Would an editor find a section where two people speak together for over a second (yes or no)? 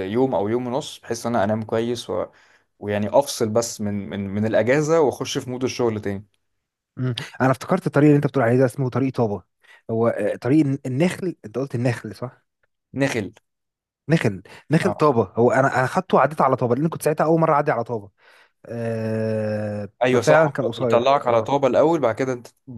yes